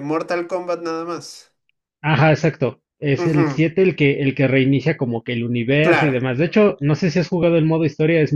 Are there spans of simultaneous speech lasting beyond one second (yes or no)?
no